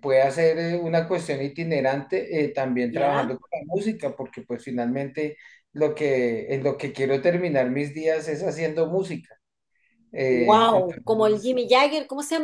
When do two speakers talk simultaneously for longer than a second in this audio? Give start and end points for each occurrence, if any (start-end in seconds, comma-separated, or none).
10.3-11.6